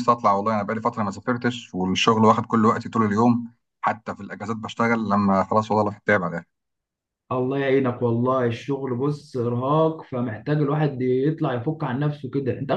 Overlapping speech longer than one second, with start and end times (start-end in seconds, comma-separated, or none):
none